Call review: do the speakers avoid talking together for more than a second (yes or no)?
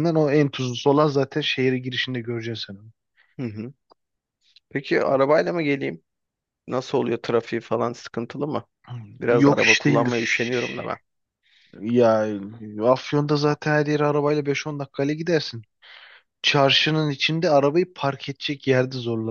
no